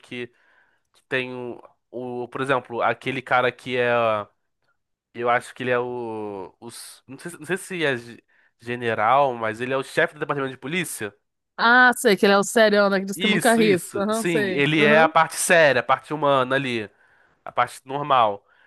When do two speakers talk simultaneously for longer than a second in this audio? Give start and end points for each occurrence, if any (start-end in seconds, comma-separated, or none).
13.1-15.1